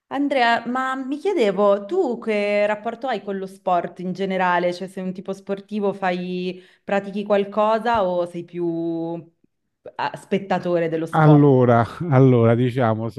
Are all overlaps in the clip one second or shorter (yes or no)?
yes